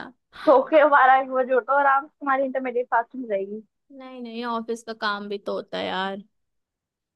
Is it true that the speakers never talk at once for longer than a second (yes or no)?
yes